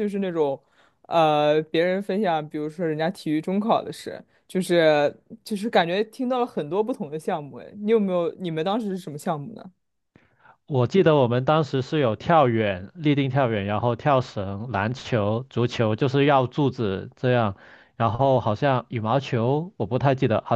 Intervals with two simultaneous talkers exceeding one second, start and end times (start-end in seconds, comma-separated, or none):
none